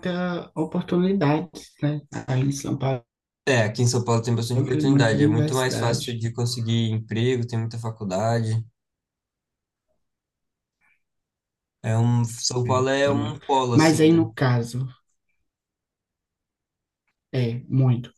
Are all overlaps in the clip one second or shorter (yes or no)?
no